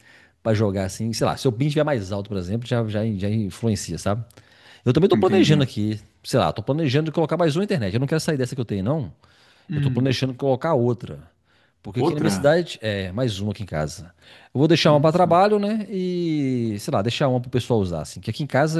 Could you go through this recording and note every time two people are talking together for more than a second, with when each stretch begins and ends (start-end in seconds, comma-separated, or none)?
none